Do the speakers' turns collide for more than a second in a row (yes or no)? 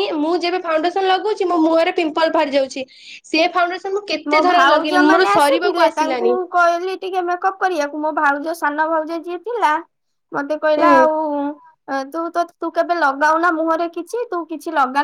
yes